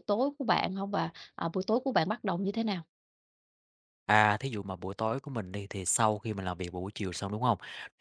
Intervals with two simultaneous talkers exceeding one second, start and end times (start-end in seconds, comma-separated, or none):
none